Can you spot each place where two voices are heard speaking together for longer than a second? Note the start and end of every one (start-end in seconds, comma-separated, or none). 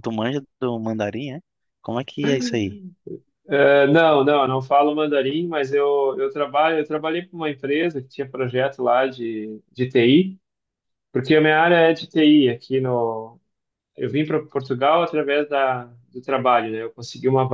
none